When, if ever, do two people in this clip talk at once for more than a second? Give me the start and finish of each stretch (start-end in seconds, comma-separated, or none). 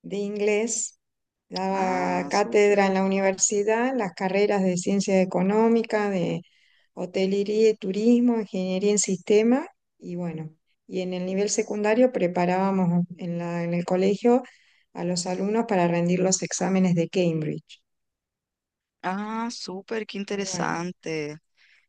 1.7-2.9